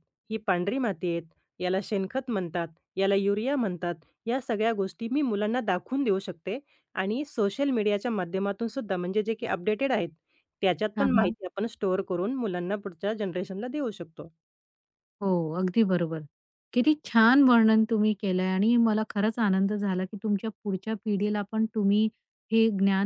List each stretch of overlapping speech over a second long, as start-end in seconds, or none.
none